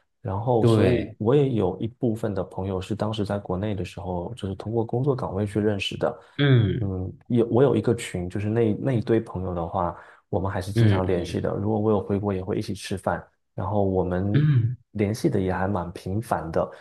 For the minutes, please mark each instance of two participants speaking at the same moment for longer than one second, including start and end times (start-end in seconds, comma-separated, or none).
none